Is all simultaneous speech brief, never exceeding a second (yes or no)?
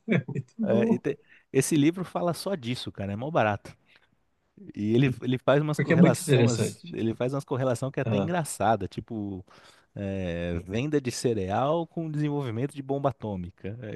no